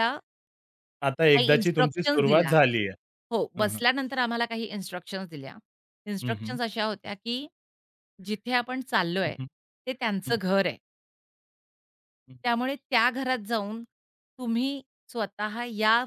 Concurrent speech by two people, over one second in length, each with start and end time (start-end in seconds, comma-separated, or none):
1.3-2.5